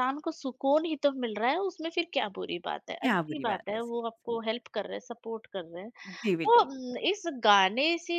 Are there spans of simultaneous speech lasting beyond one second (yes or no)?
yes